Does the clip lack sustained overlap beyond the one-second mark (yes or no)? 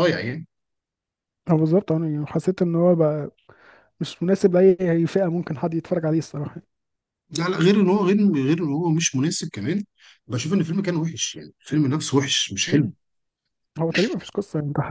yes